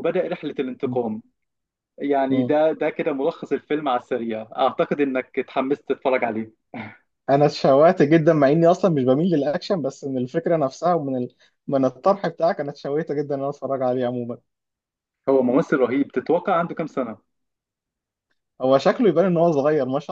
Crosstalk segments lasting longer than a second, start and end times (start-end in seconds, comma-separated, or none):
none